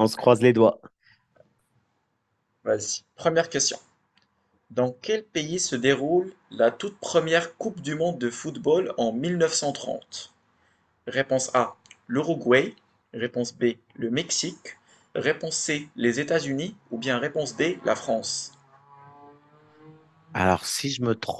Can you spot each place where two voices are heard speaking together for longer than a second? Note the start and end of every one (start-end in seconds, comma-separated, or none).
none